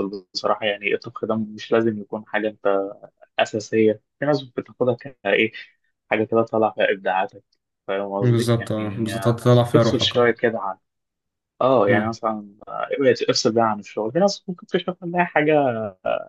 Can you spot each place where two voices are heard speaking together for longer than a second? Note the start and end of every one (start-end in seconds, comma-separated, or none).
8.2-10.3